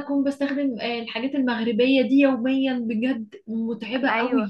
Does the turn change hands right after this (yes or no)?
yes